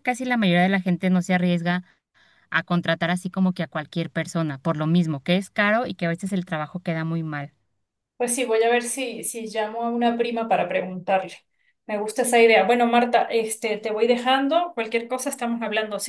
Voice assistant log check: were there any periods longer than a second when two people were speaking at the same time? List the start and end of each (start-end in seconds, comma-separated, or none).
none